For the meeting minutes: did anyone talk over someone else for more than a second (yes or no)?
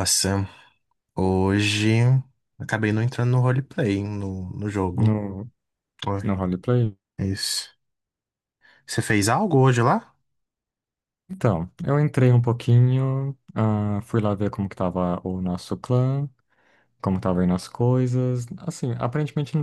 no